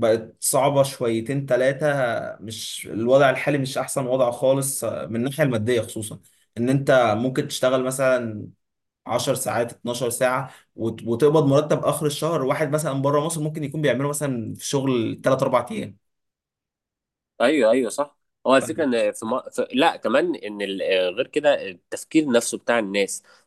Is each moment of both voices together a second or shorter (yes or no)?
yes